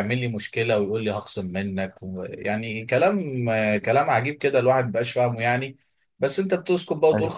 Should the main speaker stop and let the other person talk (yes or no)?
no